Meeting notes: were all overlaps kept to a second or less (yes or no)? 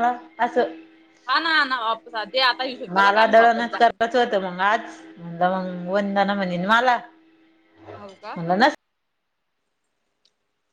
yes